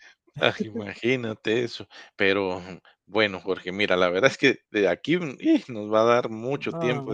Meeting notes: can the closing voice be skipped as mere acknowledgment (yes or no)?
yes